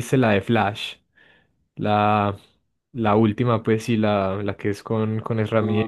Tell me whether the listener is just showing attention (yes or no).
no